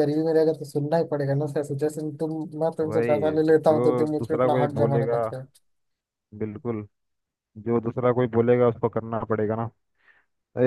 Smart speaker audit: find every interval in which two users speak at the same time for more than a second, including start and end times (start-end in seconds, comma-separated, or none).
2.9-5.2